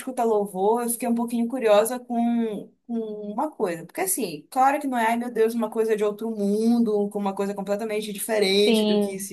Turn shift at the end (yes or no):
no